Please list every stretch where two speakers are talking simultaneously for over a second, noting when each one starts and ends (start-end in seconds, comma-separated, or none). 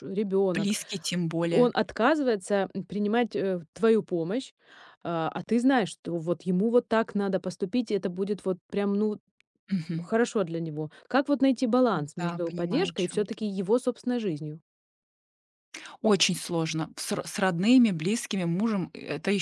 12.2-13.4